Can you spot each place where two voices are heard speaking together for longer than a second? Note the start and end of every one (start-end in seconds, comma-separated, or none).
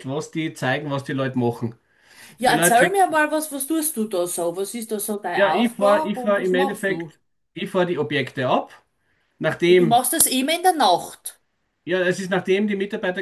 5.3-7.1